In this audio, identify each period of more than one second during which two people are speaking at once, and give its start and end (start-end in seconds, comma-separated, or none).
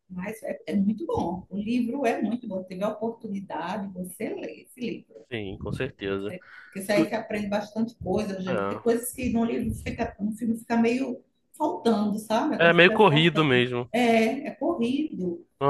12.6-13.9